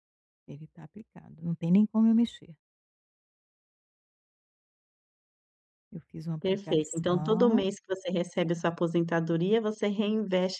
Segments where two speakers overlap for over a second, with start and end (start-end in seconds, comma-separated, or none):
6.4-7.6